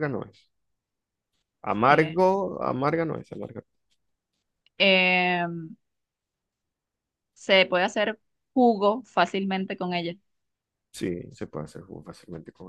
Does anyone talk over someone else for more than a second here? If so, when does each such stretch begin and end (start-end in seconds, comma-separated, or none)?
none